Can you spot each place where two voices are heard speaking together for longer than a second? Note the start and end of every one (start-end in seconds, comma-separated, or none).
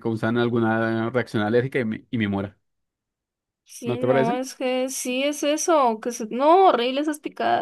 none